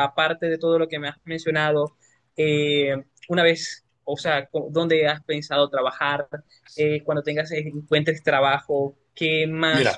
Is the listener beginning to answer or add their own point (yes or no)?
no